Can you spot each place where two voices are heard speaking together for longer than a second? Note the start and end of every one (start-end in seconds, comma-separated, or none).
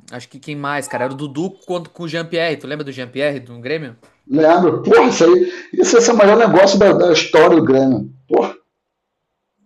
none